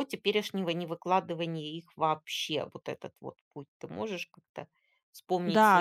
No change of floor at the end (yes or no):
no